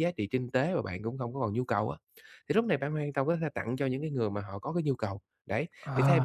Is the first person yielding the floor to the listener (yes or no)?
no